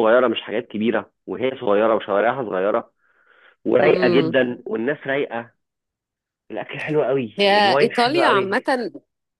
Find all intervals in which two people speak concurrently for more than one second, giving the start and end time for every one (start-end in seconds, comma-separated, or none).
7.4-8.7